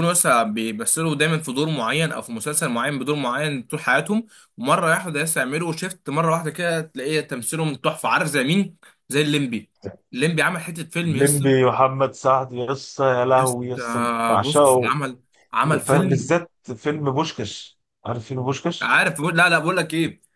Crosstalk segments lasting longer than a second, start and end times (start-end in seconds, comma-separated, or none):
13.4-15.0